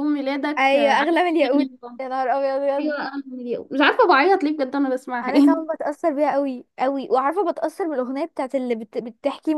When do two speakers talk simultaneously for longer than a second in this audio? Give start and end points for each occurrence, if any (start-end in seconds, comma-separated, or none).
0.6-2.0